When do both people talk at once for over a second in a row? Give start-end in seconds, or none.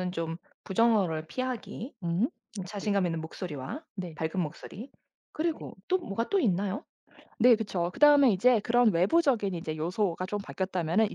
none